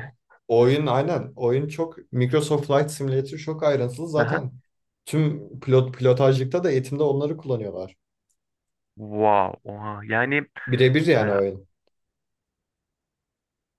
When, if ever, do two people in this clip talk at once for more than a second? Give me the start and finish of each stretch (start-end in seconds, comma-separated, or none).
none